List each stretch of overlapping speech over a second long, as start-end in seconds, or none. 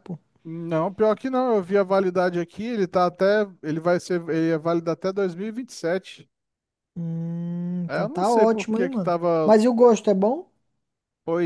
7.9-9.5